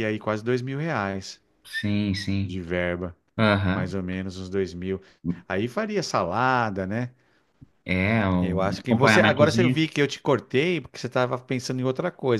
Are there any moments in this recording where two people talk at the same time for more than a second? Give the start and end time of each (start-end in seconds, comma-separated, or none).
8.4-9.8